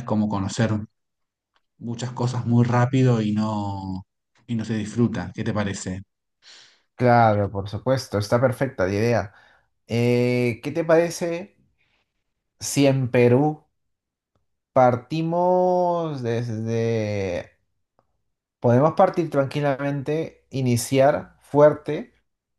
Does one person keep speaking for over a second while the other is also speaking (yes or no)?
no